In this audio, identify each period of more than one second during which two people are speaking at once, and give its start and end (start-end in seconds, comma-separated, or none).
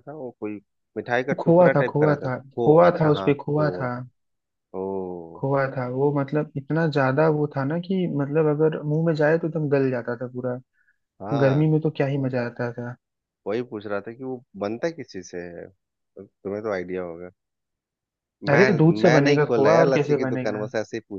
1.3-3.9, 18.5-20.7